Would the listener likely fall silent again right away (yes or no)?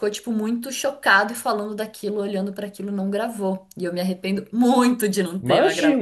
no